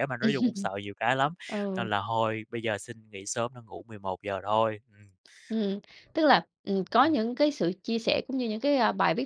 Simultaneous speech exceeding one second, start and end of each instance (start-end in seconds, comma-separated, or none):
none